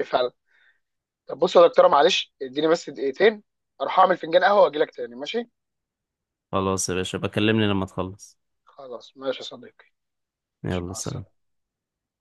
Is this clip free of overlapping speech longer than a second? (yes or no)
yes